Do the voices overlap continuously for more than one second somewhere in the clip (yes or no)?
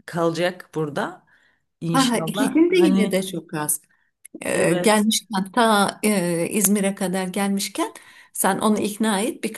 yes